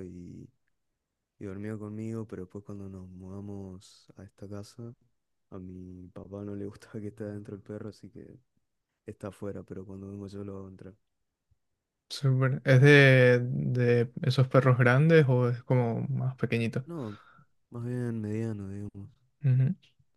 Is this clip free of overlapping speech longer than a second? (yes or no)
yes